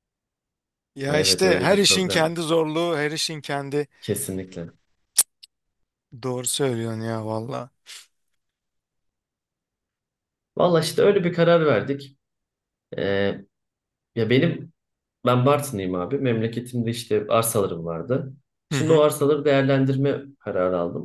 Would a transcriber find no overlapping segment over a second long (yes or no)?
no